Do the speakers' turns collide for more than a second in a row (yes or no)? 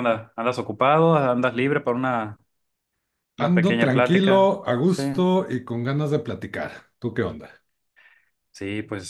yes